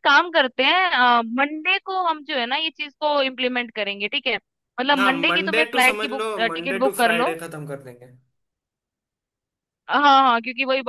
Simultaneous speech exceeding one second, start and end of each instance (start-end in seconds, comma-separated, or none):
5.0-7.3